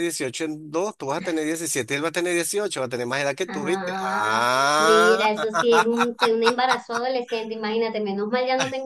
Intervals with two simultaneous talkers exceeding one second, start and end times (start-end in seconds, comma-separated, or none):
3.5-5.3